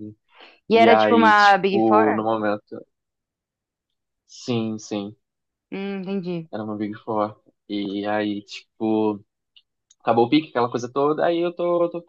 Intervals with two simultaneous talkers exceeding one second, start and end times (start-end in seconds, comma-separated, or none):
0.7-2.2